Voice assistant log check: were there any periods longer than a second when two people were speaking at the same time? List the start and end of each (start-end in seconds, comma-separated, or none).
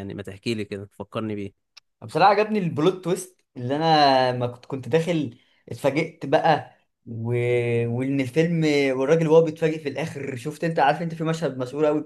none